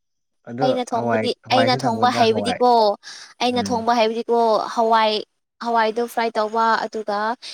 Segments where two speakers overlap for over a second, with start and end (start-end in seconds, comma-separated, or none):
0.6-2.6